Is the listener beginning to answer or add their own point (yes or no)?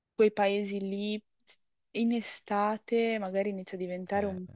no